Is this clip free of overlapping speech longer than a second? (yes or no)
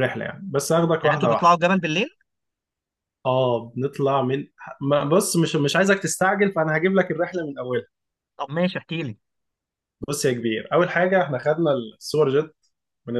yes